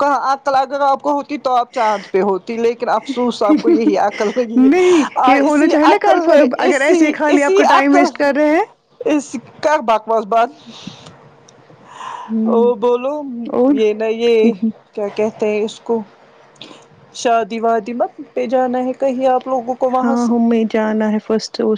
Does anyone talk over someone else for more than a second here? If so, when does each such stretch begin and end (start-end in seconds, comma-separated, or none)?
4.6-8.1